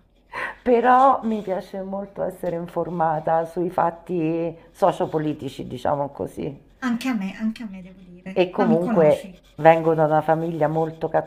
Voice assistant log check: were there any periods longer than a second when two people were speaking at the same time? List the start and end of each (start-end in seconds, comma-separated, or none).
8.3-10.1